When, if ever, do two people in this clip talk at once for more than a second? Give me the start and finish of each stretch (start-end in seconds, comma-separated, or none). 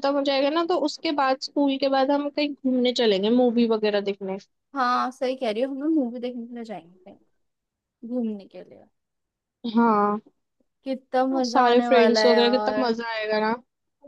11.4-12.9